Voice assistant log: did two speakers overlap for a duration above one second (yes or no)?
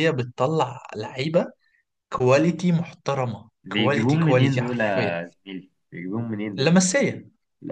yes